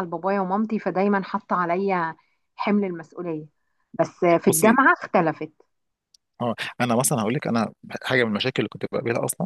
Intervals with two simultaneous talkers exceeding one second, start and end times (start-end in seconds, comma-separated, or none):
none